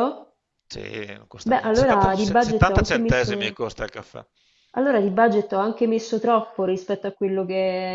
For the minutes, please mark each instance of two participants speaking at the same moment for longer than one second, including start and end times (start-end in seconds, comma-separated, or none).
1.4-3.6